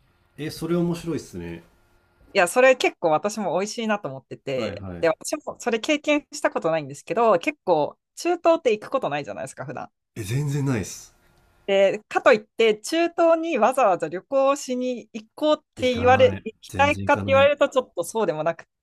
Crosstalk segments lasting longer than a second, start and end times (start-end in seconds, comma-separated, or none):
15.8-17.5